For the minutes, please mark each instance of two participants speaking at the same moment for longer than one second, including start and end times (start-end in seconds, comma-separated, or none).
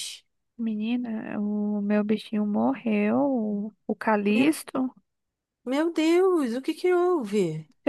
none